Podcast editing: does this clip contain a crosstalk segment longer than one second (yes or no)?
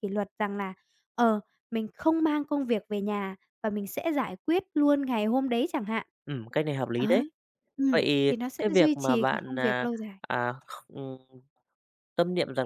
yes